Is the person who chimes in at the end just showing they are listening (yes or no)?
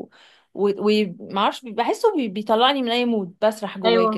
no